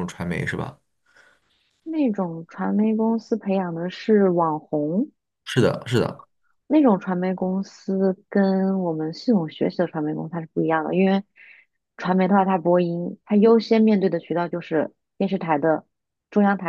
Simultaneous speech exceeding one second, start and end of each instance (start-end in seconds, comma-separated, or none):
none